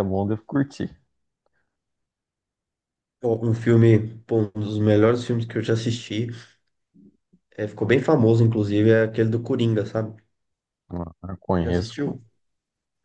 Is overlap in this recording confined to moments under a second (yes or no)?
yes